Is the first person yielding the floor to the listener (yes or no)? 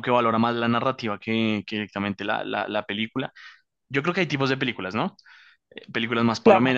no